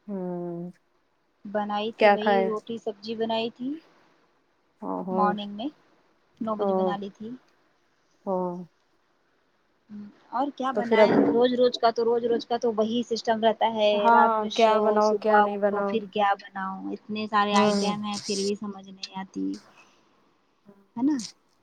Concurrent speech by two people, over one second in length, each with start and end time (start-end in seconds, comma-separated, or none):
14.1-15.9